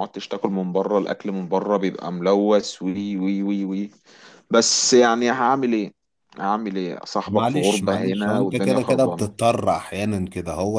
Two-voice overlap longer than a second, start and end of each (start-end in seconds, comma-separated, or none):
7.3-9.3